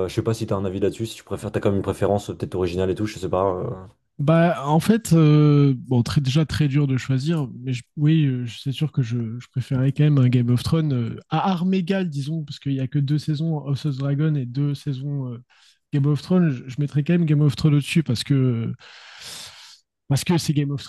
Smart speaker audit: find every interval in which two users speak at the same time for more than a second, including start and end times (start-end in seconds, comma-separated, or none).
none